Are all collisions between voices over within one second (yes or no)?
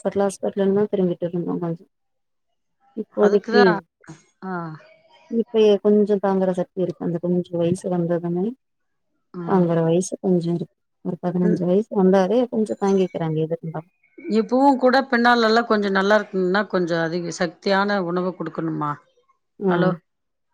yes